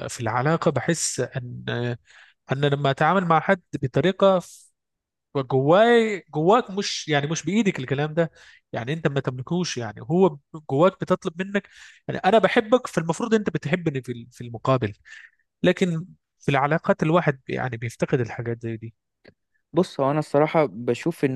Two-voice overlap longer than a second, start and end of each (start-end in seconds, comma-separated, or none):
none